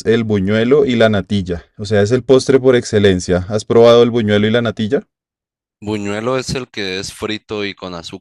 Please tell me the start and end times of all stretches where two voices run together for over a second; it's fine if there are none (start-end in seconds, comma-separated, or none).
none